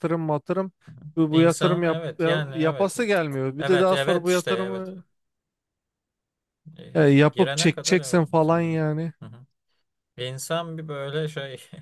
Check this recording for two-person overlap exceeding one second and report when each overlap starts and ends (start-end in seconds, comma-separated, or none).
1.3-3.0, 3.6-4.9, 6.9-8.8